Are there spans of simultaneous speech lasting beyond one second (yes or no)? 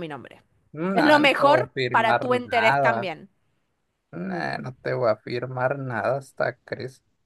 yes